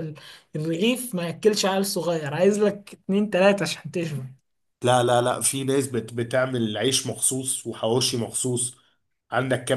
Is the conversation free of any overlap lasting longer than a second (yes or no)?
yes